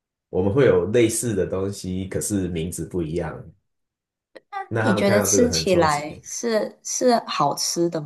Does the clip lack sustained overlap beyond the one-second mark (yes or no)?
no